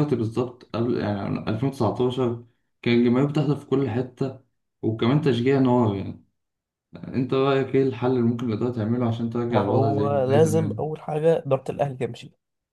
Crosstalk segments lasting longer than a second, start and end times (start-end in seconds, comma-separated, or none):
9.5-10.8